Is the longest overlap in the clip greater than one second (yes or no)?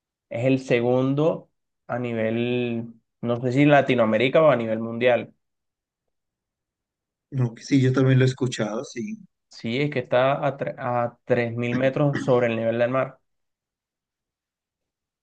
no